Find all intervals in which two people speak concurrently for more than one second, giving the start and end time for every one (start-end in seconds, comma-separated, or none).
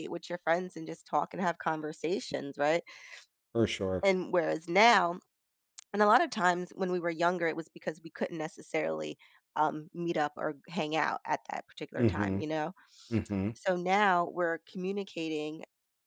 none